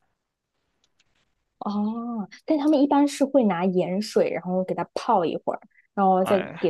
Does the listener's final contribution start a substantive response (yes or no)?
no